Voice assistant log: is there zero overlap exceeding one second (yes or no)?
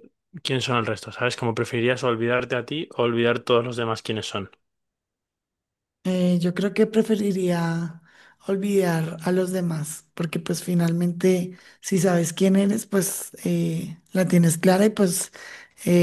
yes